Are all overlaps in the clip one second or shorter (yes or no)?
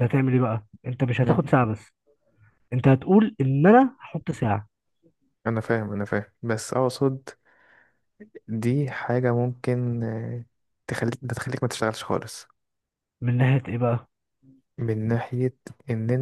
yes